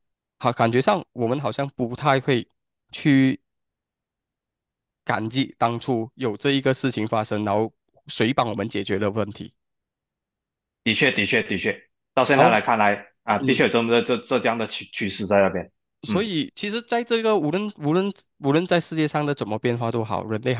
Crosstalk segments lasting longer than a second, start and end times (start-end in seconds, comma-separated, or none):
none